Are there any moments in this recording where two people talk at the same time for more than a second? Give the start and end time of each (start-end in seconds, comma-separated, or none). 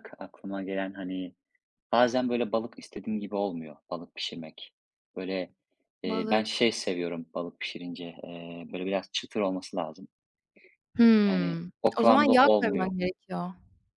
11.3-12.9